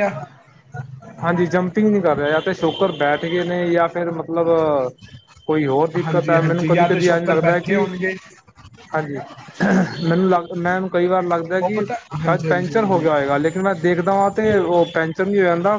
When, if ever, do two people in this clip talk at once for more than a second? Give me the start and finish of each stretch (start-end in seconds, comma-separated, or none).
6.0-7.8, 11.6-13.1